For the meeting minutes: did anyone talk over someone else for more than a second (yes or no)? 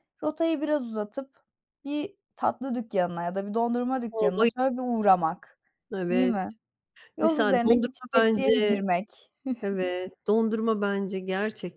yes